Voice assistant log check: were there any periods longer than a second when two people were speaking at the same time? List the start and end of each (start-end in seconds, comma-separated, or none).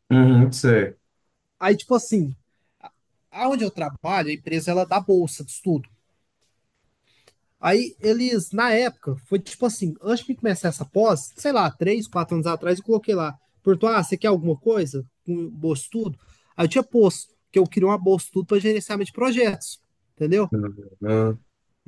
none